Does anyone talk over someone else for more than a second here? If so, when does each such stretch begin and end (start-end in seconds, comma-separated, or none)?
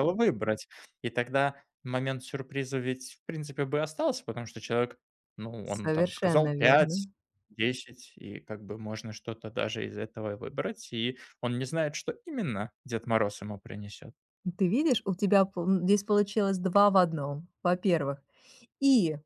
5.6-7.0